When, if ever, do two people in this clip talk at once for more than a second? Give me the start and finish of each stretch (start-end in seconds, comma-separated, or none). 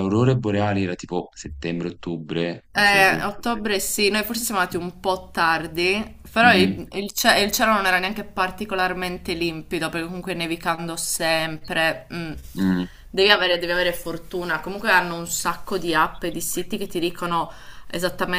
none